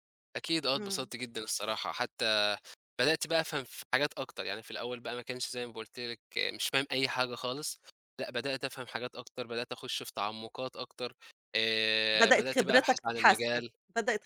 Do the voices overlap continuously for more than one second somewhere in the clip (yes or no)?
yes